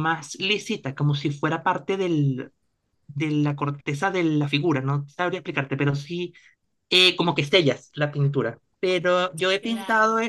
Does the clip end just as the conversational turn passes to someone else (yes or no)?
no